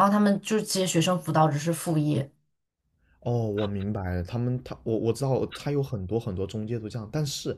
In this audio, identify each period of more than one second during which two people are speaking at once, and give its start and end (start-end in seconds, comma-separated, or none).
none